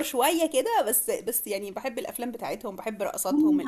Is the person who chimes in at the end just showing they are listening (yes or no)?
no